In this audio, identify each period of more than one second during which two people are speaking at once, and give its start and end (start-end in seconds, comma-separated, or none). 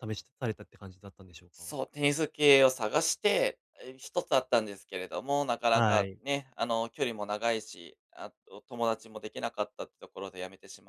none